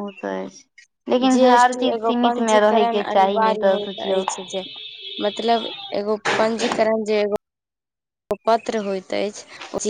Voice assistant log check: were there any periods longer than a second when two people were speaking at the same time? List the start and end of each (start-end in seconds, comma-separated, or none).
1.3-4.2